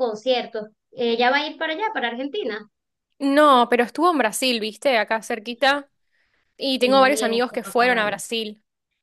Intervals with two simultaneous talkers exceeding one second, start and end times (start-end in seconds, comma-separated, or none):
6.8-8.2